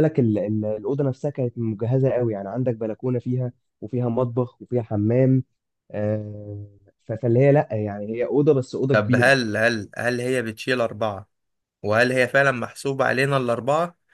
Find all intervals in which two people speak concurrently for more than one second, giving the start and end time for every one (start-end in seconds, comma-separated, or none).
none